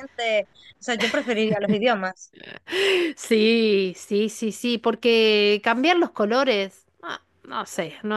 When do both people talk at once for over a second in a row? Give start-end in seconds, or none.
none